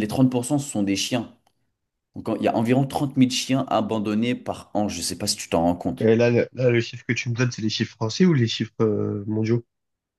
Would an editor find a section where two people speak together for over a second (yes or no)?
no